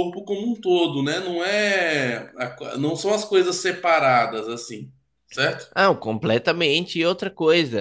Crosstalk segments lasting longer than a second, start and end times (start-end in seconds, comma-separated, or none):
none